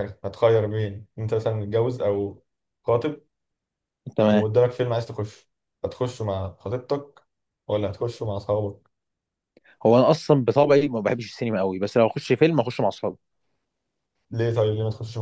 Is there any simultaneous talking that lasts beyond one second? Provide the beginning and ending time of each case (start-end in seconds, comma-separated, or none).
none